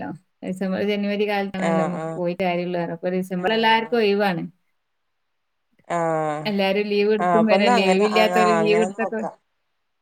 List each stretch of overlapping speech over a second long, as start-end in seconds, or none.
7.2-9.2